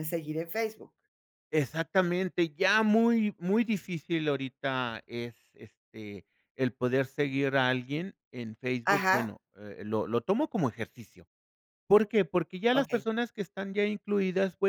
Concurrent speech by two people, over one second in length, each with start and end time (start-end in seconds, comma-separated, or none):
none